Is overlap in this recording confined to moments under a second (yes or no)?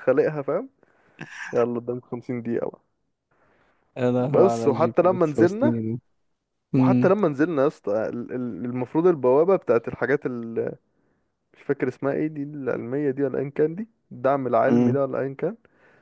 no